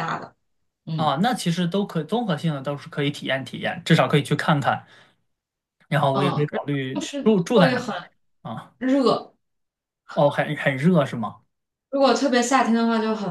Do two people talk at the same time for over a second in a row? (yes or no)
yes